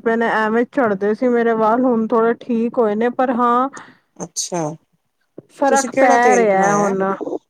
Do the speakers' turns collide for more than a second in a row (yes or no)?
yes